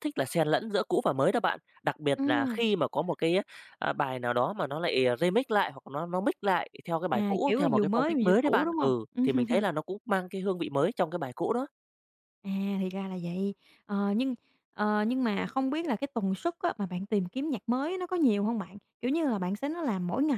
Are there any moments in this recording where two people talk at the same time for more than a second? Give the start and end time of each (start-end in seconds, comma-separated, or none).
7.1-8.9